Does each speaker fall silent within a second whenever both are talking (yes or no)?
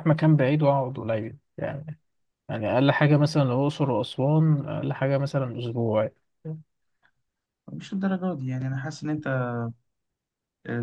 yes